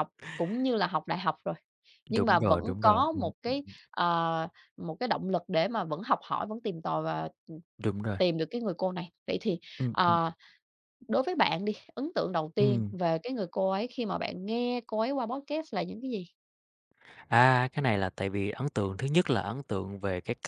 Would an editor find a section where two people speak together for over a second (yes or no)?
yes